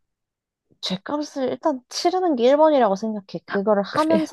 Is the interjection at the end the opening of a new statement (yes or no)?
no